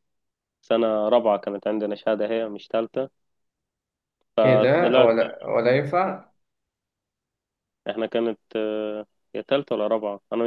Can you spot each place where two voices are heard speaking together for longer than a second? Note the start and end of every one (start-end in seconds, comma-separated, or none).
none